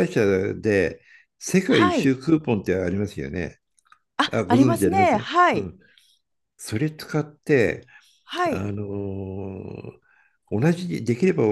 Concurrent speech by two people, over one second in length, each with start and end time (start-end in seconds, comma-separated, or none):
4.3-5.7